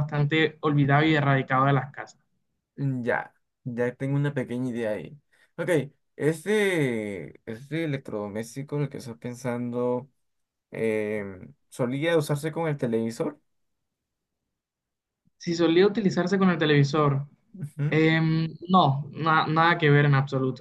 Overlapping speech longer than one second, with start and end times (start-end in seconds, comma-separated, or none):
none